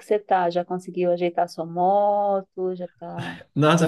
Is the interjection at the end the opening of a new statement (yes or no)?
yes